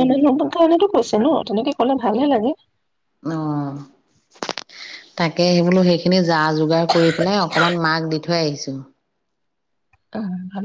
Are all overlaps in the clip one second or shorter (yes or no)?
yes